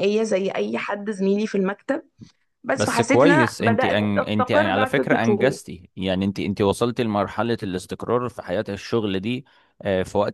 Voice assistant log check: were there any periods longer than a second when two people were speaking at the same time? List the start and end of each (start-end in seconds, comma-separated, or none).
2.7-5.6